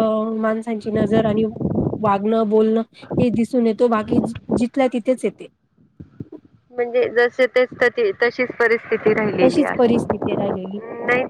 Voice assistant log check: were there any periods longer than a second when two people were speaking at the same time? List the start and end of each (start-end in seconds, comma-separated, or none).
9.4-10.8